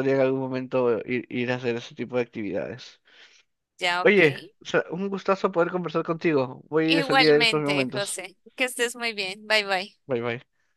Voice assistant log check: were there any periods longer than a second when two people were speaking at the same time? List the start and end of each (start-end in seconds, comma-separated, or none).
6.8-8.2